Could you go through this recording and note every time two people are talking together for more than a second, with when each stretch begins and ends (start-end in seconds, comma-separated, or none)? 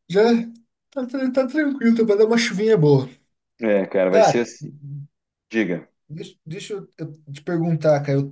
none